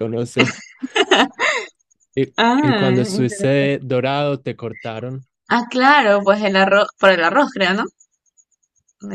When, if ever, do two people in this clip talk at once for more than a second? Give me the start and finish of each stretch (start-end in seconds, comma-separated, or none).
2.4-3.8